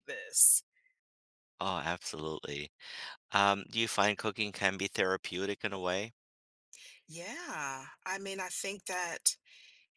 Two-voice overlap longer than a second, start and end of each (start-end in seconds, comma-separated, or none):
none